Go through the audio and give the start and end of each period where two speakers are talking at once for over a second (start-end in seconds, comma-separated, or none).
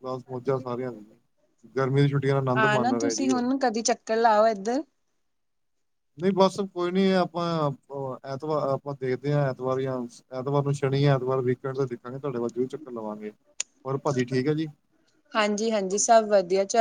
none